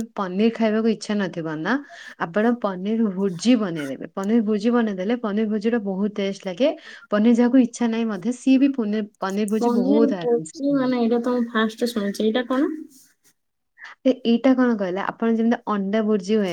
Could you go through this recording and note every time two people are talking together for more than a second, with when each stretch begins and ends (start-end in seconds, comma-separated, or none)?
none